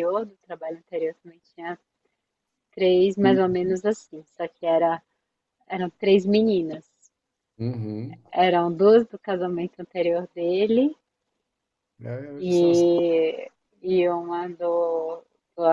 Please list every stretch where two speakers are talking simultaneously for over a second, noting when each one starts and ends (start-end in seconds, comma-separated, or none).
none